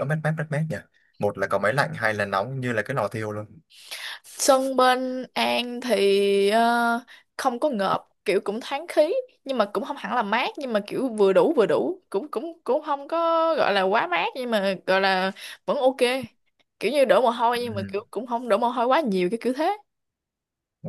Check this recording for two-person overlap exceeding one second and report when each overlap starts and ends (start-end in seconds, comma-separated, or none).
none